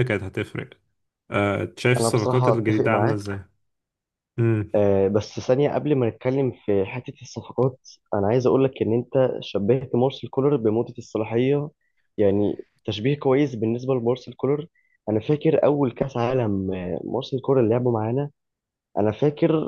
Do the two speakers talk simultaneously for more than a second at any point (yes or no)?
yes